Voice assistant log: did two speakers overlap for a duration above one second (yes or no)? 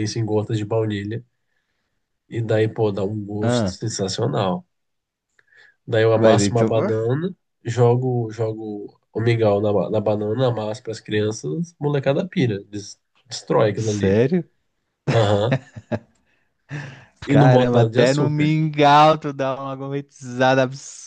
yes